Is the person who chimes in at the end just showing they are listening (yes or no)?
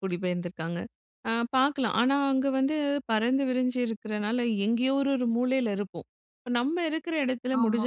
yes